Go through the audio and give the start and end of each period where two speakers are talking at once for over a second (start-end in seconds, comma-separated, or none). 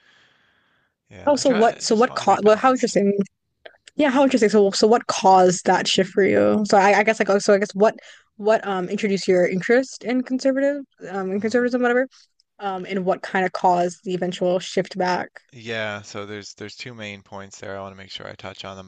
1.3-2.9